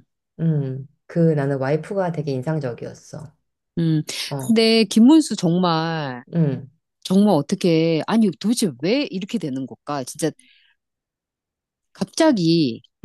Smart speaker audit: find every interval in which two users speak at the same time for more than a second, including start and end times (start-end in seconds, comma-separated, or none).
none